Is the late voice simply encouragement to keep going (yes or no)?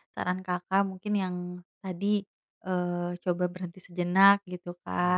yes